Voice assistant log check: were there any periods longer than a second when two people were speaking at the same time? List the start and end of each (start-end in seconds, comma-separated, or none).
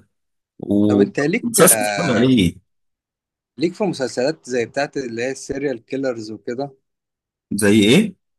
0.9-2.2